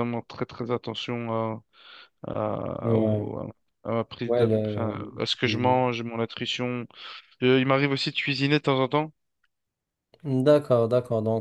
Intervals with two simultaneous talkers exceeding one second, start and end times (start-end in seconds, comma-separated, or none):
4.2-5.8